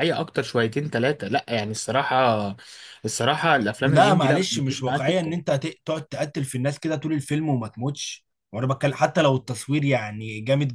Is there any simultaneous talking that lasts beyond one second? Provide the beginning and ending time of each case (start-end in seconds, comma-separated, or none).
3.8-5.3